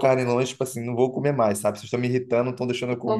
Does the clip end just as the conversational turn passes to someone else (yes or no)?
no